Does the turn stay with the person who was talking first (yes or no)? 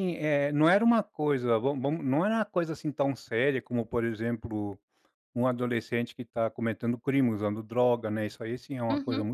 no